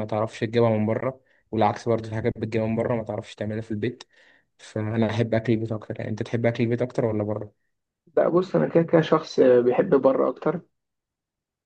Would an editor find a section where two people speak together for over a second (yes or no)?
no